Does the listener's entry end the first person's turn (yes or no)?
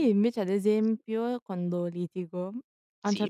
no